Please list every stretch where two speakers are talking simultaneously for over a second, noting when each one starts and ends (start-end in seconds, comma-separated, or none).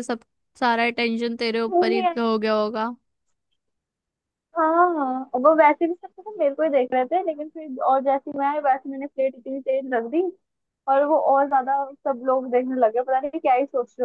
none